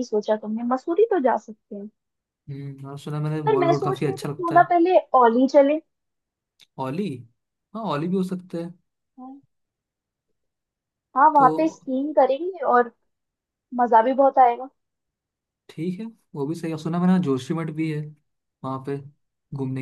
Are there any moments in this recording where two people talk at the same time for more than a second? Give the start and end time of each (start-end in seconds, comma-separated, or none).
3.4-4.7